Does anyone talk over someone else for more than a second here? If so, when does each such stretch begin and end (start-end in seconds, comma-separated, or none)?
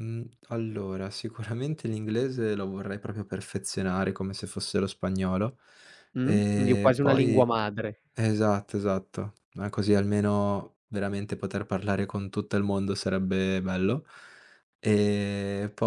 6.2-7.5